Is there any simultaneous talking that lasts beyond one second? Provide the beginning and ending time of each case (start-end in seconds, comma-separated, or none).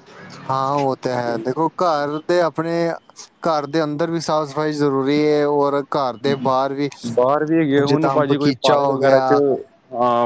7.8-9.3